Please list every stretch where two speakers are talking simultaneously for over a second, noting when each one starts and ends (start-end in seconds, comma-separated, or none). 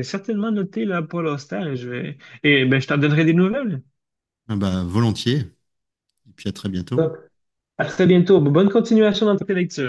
none